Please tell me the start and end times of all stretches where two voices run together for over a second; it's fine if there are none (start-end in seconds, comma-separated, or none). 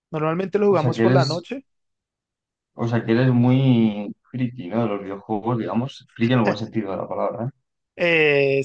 none